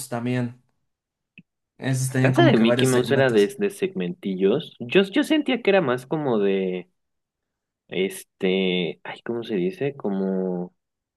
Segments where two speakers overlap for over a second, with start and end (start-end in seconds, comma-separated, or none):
2.2-3.5